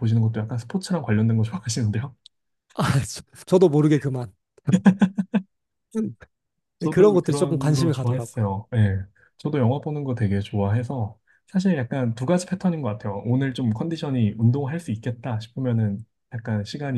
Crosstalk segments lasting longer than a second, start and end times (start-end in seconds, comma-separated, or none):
6.9-8.5